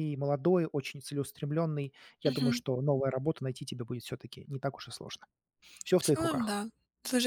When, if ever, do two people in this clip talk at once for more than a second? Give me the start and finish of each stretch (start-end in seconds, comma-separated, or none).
none